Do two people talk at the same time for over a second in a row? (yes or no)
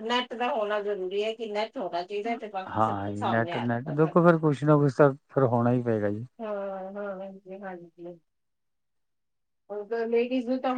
yes